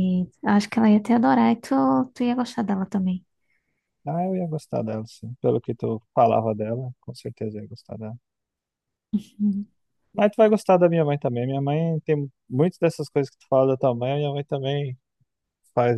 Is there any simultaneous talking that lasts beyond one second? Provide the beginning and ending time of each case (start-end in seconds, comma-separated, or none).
none